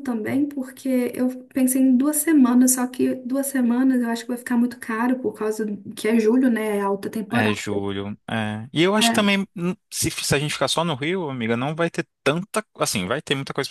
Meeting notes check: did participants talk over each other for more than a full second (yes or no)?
no